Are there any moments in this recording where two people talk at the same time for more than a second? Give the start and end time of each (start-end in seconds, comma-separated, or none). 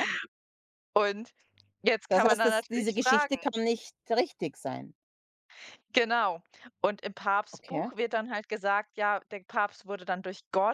2.1-3.4